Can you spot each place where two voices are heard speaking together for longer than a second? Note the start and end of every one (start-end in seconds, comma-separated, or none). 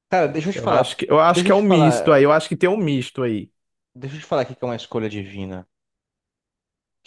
0.5-2.2